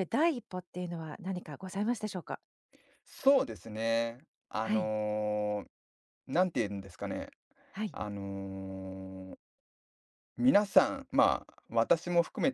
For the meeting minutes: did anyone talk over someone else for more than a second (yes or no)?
no